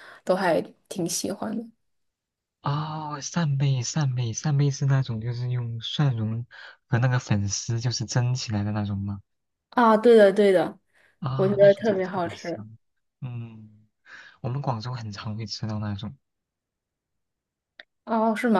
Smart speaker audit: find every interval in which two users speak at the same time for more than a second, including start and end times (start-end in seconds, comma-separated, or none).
11.3-12.7